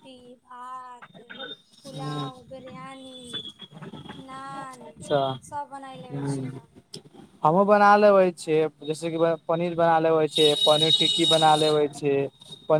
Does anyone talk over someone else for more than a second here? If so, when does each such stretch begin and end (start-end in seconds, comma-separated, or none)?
none